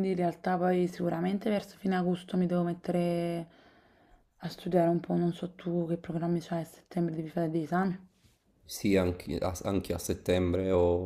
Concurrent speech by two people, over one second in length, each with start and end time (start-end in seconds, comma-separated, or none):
none